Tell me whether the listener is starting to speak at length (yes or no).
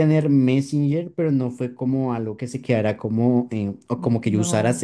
no